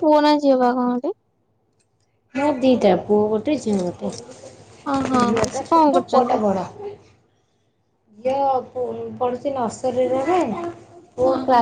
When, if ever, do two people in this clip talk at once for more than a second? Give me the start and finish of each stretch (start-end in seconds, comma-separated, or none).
4.9-6.4